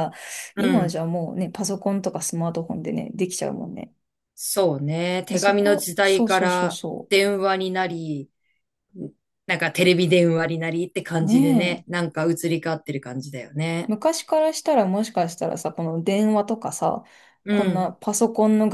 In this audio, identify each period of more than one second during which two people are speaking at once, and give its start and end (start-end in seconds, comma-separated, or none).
5.3-7.1